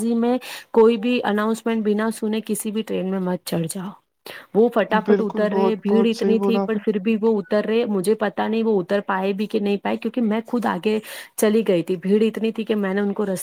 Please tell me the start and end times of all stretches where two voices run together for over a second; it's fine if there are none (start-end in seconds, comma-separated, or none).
5.1-6.8